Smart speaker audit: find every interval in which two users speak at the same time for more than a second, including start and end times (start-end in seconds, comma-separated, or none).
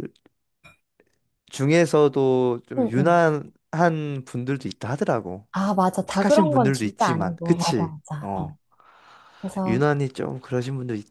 6.1-8.5